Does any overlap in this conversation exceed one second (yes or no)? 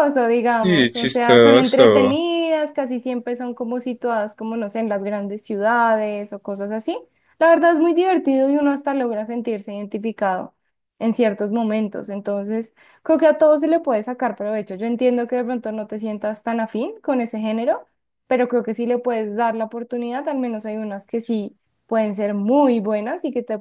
yes